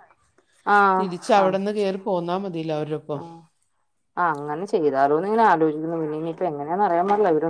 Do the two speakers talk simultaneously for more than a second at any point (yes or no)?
no